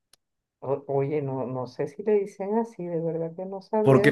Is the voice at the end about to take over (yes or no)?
yes